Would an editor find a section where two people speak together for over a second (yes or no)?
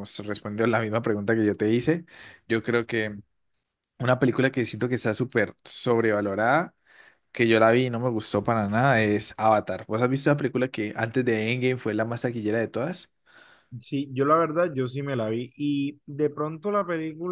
no